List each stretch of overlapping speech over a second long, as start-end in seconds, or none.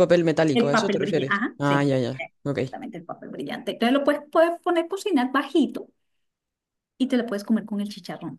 0.5-2.6